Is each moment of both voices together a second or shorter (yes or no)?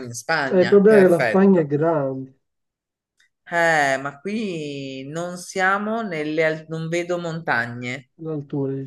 no